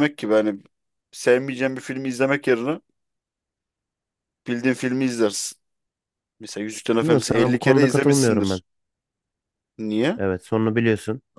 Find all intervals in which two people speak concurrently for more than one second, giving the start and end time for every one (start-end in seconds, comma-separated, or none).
7.0-8.6